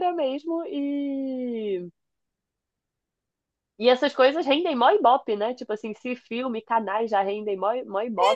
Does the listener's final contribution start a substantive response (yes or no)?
yes